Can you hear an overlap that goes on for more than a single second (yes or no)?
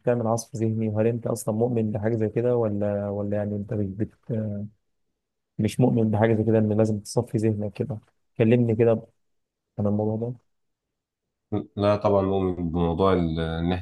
no